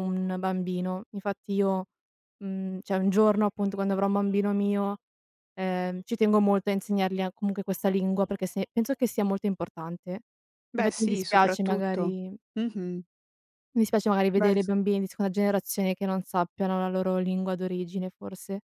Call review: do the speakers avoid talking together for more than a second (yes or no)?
no